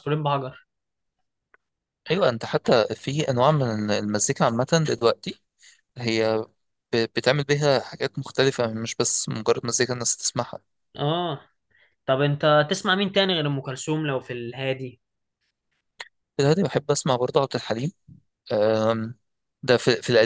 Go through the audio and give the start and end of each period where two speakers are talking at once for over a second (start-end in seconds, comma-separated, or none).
none